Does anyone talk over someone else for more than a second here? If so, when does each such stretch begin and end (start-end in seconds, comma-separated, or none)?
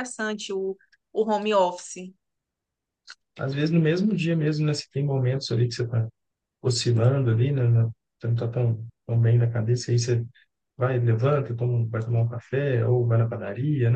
none